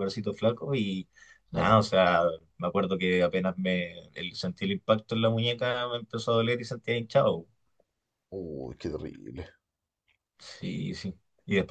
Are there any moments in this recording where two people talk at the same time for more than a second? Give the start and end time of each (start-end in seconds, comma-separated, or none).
none